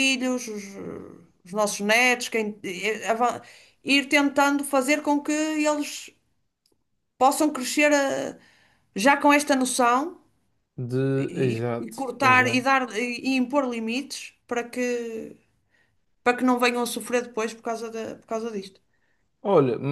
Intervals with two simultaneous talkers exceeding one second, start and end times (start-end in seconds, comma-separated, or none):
11.2-12.7